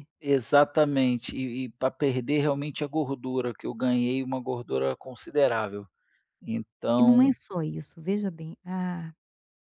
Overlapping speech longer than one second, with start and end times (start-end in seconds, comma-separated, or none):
none